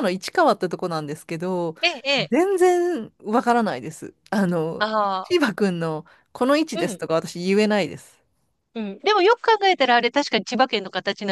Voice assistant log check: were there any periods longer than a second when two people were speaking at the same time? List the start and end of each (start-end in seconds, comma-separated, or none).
none